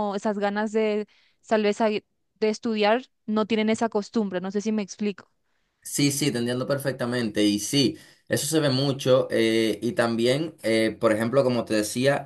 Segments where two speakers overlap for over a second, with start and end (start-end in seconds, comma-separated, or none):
none